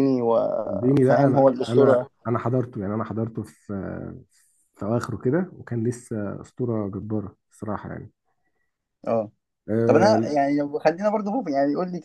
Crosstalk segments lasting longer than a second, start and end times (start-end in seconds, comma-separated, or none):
0.6-2.1